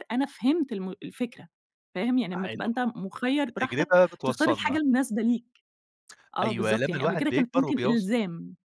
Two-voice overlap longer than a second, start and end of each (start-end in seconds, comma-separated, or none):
3.4-4.8, 6.4-8.1